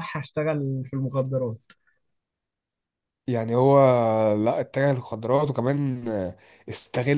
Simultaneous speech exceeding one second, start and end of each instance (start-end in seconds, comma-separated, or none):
none